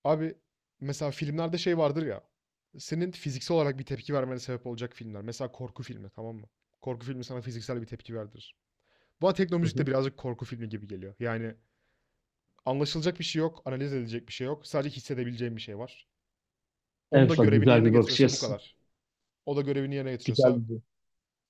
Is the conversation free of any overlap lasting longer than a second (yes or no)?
no